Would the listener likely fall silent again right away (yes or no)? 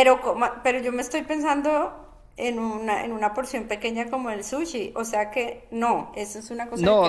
no